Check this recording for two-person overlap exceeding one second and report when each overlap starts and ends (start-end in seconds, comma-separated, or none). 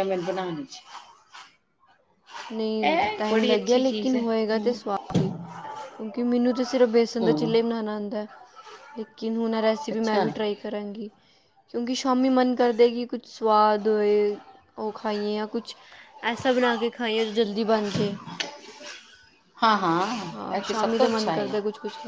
2.8-4.8